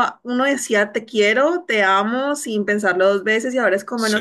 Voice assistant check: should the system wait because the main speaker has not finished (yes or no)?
yes